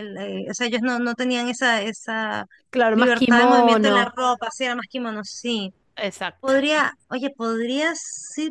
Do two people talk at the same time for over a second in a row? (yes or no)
yes